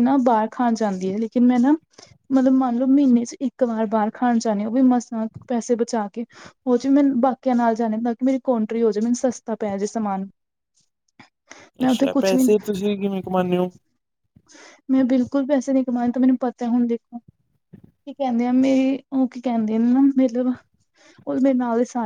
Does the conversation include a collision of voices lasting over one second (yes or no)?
no